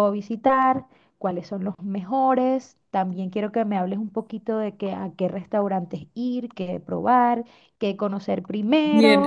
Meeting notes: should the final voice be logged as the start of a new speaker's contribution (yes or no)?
yes